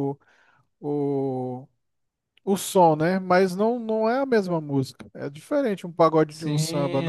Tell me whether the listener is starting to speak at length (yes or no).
yes